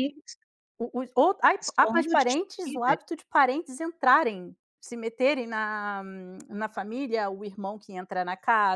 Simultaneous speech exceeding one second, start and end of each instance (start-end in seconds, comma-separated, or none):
1.6-3.0